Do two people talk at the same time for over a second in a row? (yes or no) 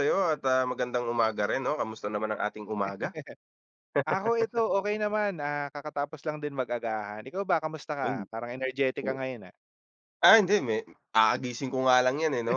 no